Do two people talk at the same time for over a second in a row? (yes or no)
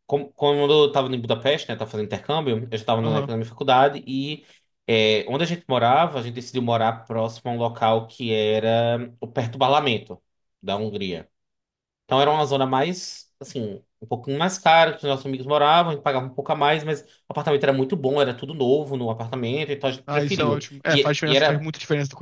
yes